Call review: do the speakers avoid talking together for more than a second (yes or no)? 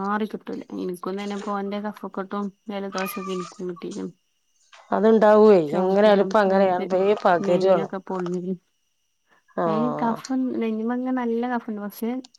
yes